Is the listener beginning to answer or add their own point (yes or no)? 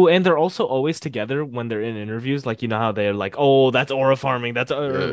yes